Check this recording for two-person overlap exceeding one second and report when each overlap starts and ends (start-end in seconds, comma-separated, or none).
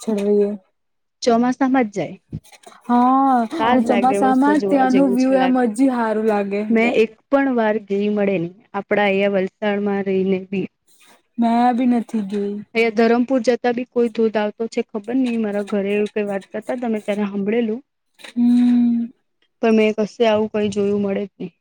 3.7-5.7